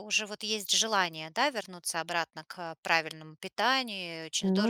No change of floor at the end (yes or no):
yes